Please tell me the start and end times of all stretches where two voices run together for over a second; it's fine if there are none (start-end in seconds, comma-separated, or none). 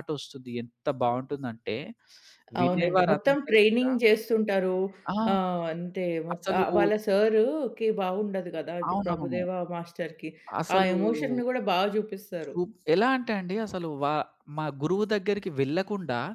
2.6-3.9